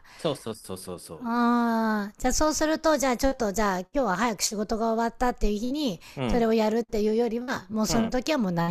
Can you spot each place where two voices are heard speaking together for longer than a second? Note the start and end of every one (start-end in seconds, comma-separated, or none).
none